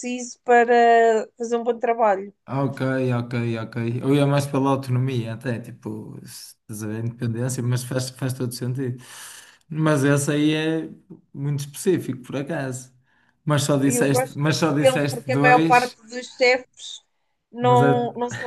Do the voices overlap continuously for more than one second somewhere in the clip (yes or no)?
yes